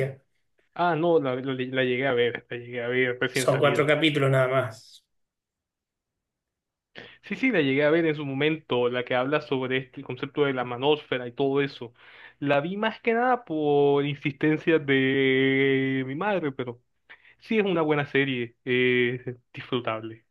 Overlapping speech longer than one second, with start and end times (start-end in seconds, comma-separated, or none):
none